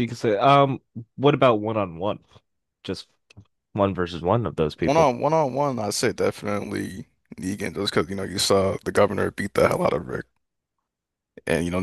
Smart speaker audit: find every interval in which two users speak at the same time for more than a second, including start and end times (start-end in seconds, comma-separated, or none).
none